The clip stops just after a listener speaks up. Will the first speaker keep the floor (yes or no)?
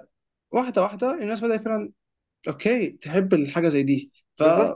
no